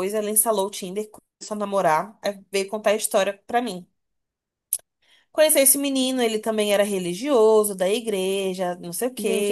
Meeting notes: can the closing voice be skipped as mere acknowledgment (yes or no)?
no